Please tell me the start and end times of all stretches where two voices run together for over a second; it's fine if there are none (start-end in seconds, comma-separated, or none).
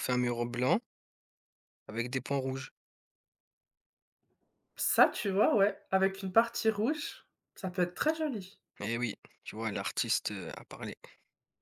none